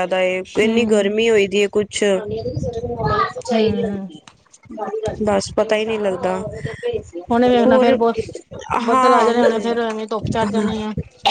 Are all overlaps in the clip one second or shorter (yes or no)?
no